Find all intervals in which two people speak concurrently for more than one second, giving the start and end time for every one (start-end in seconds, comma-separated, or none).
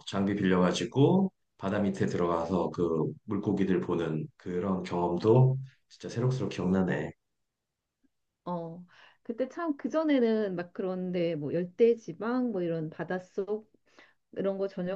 none